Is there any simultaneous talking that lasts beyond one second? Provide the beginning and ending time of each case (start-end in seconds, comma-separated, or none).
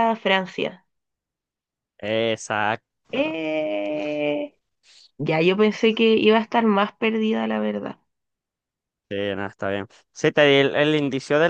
none